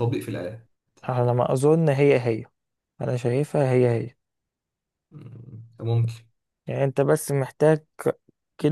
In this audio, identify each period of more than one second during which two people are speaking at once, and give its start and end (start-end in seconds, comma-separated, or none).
none